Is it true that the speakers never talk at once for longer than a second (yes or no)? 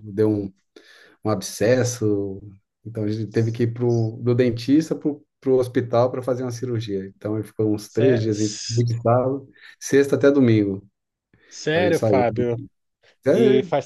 yes